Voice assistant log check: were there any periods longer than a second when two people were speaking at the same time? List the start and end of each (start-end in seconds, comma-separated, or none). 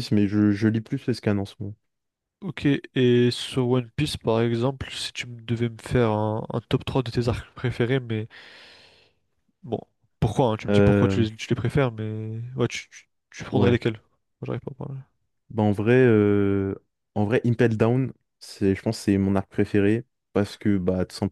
none